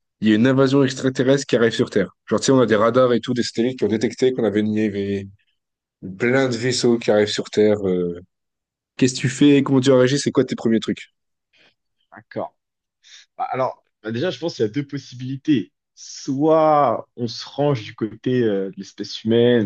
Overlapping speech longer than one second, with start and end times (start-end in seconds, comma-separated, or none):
none